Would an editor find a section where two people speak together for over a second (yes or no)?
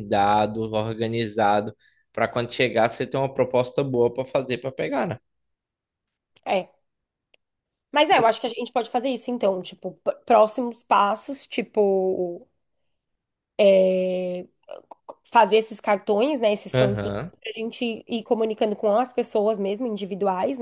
no